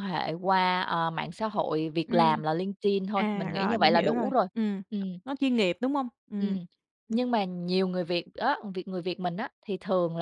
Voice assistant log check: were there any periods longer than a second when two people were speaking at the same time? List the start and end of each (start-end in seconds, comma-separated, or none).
3.1-4.5